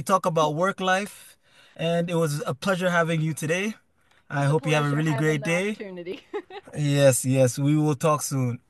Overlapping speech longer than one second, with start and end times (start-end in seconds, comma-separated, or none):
4.4-5.8